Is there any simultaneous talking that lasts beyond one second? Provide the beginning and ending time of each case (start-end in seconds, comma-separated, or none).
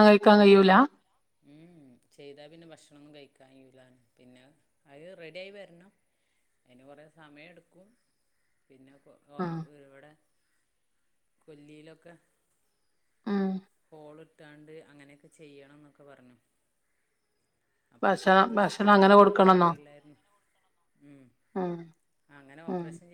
18.1-19.7